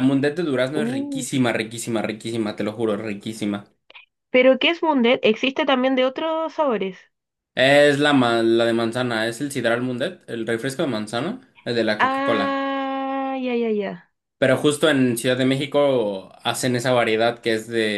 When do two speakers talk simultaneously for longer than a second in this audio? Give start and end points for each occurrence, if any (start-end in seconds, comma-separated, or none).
none